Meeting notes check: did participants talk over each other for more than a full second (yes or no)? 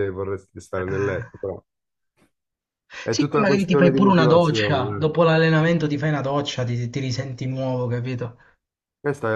yes